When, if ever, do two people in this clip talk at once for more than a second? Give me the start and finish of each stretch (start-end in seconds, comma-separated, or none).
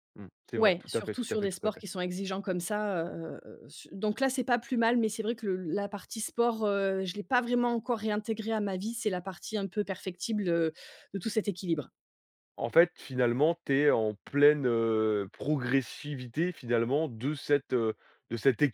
0.6-1.8